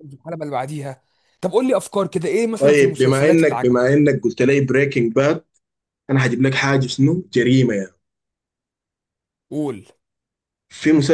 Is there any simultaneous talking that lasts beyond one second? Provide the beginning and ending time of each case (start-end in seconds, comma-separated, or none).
2.6-3.9